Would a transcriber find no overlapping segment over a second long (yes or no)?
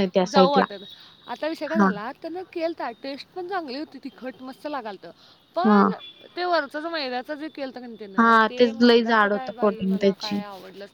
no